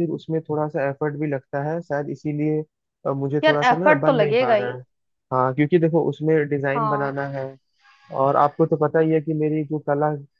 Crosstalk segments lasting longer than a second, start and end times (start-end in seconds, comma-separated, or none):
3.4-4.8